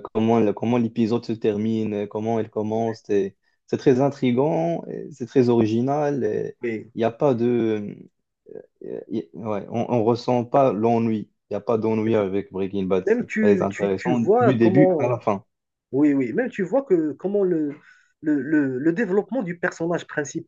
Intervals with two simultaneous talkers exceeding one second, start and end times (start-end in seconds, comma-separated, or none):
13.1-15.0